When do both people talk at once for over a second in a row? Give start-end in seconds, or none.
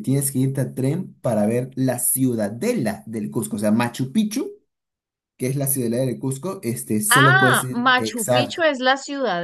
7.1-8.6